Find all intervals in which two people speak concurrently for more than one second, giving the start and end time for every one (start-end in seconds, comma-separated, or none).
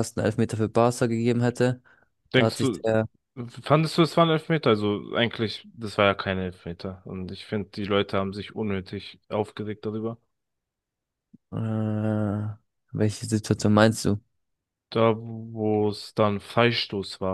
none